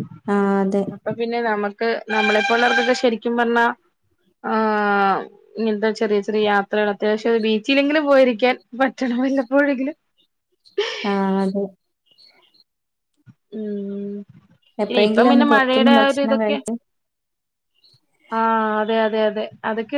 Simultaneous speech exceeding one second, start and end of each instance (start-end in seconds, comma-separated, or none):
14.9-16.6